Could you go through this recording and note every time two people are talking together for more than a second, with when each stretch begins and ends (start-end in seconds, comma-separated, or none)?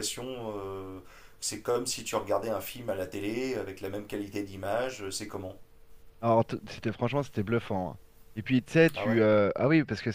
none